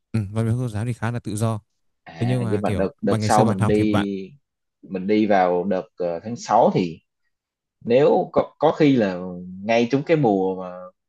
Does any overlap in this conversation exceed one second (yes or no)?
yes